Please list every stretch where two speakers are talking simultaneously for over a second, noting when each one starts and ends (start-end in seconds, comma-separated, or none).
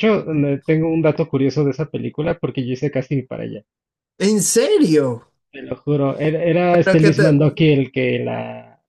none